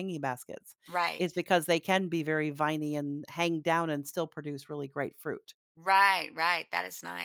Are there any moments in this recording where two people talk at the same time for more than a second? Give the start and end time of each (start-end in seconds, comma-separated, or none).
none